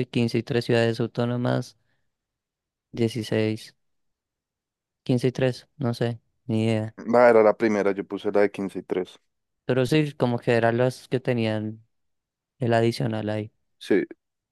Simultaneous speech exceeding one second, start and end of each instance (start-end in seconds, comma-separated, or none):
none